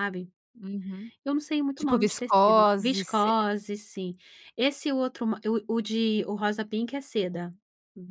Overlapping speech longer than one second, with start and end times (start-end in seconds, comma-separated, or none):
1.8-3.3